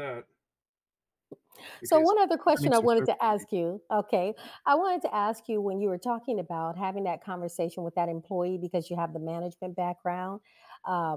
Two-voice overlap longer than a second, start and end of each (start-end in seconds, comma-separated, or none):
1.8-3.5